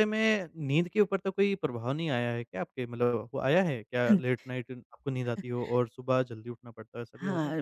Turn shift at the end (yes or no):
yes